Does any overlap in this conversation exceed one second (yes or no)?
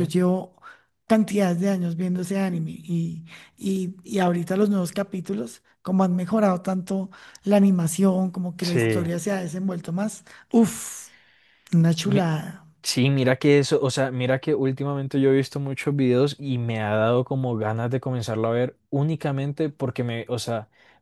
no